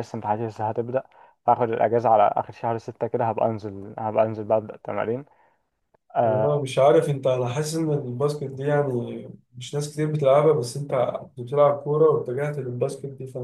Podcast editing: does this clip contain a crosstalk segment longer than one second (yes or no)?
no